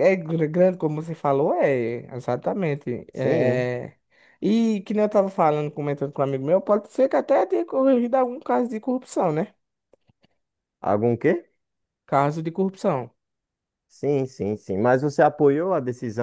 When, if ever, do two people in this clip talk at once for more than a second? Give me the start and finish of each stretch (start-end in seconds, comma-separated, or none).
none